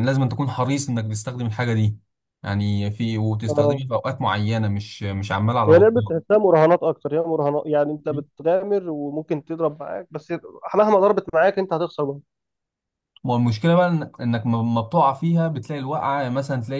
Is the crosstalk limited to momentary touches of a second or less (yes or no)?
yes